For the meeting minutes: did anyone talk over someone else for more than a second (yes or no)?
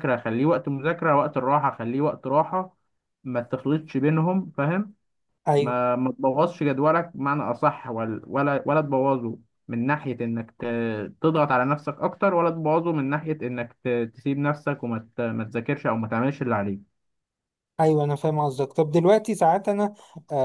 no